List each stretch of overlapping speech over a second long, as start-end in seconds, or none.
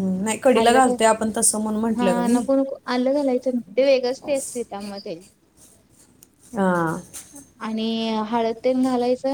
none